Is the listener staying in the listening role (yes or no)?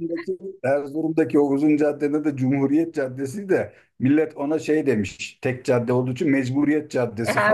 no